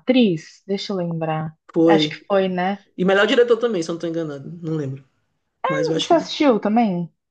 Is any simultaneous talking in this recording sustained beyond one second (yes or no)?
no